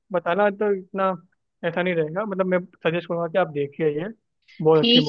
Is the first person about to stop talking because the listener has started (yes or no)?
yes